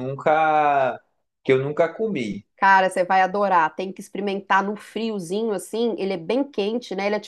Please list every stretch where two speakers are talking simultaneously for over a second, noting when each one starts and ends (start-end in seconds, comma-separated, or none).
none